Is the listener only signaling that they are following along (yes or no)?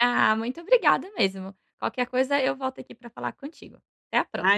no